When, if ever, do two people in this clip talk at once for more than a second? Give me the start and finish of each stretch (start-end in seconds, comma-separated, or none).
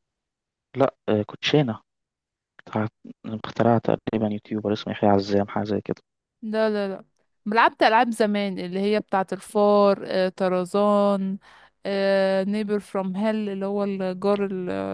none